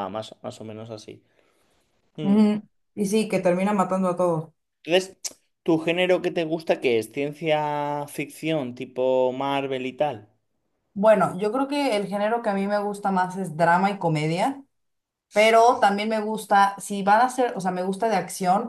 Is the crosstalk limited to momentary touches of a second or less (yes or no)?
yes